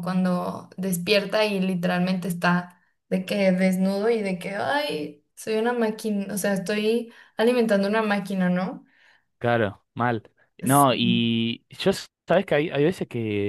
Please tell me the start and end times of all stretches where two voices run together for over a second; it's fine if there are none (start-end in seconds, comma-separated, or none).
none